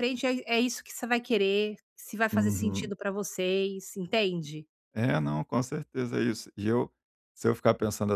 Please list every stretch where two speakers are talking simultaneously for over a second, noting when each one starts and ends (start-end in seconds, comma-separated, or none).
none